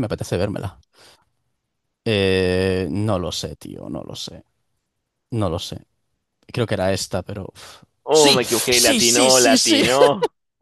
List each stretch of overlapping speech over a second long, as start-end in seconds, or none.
8.1-9.8